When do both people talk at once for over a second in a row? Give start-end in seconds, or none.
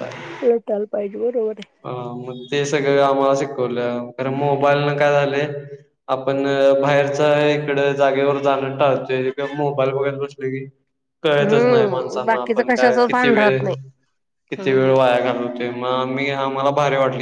11.4-13.6